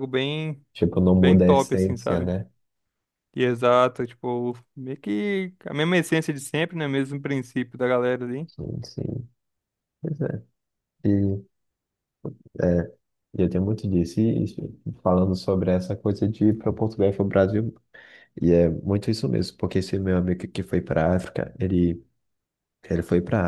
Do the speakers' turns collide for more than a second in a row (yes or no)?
yes